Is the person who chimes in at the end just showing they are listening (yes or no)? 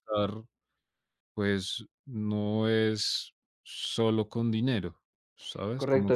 no